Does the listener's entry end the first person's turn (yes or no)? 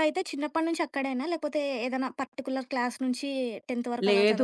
yes